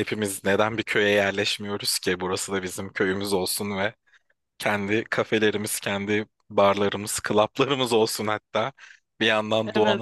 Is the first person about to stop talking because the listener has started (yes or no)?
no